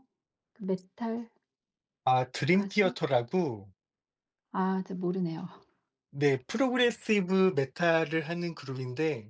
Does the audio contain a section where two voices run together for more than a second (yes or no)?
no